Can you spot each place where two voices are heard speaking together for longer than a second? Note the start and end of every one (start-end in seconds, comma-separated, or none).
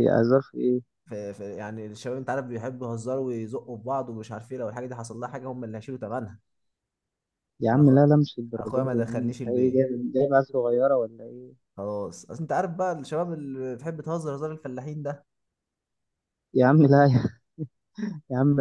8.6-9.9